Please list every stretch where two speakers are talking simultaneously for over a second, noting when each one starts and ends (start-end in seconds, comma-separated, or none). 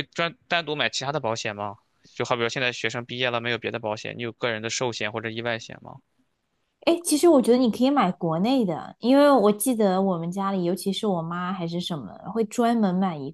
none